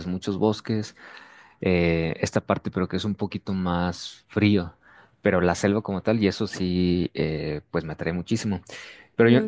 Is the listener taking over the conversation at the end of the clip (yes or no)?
no